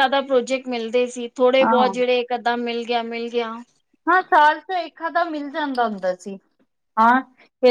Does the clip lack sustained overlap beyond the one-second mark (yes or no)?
yes